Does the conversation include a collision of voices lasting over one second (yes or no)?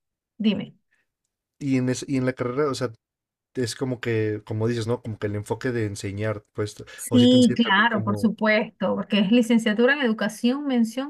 yes